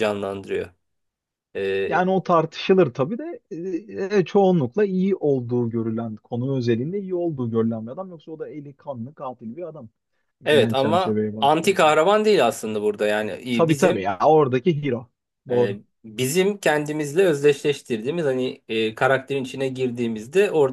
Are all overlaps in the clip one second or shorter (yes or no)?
no